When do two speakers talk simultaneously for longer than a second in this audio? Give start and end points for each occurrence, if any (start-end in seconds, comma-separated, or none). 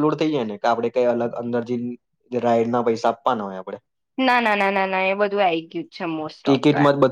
none